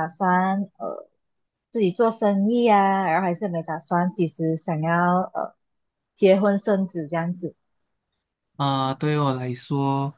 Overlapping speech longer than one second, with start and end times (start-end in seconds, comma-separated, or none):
none